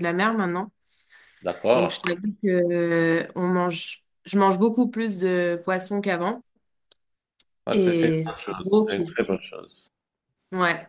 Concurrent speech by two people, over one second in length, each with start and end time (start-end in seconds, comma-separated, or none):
7.7-9.2